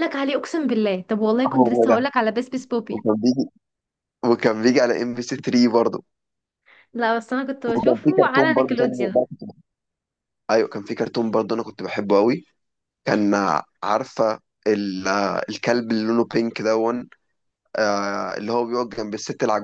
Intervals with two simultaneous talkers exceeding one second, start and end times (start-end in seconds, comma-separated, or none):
7.8-9.2